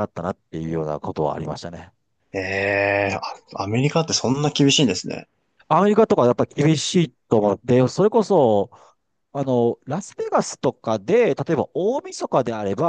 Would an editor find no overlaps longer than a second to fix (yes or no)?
yes